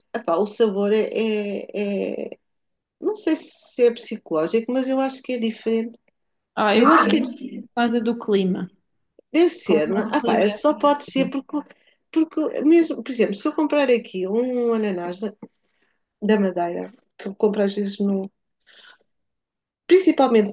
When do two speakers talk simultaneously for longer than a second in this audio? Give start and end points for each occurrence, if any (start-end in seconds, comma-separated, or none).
9.6-11.4